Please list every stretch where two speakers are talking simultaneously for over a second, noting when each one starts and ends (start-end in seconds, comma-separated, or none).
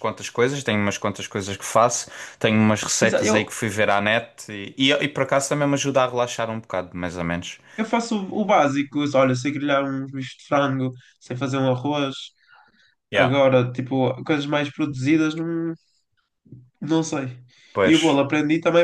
none